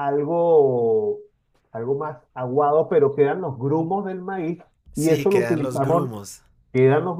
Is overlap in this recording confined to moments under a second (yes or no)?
no